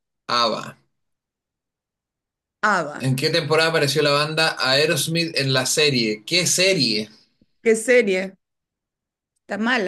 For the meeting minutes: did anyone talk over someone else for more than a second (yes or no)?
no